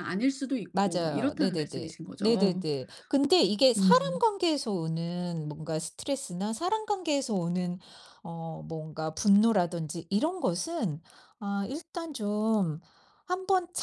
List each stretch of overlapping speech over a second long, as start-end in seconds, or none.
0.7-2.6